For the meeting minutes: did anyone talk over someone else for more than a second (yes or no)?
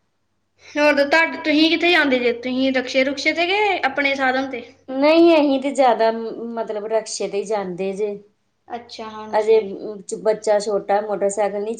no